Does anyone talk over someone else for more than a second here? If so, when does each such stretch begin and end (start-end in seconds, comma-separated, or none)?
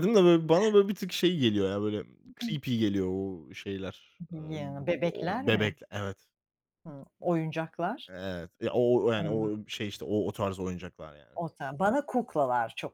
4.3-5.8